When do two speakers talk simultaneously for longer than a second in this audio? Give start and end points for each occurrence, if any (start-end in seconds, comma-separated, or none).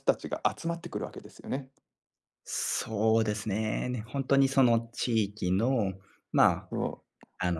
none